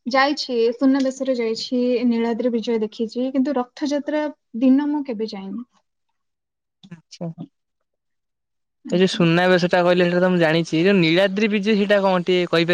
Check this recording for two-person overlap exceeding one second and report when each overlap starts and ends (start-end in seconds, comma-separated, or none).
none